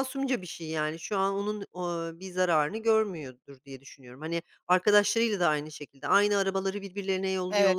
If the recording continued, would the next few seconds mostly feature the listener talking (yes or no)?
yes